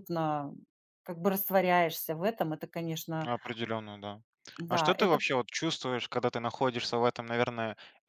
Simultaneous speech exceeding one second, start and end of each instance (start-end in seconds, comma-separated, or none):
none